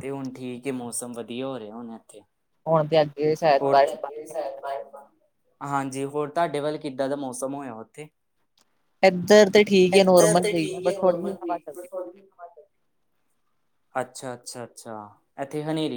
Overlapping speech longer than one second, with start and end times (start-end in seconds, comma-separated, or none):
10.0-11.6